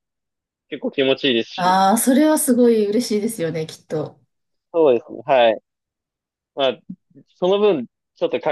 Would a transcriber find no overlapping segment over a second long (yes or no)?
yes